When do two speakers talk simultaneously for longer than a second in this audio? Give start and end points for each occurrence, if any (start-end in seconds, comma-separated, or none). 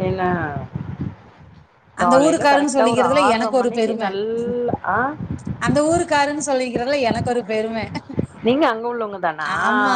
2.0-4.0